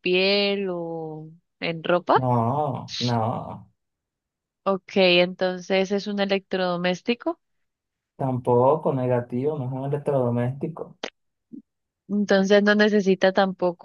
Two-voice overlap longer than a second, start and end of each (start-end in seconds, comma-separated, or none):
none